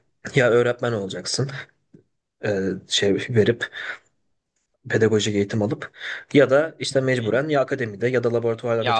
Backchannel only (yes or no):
no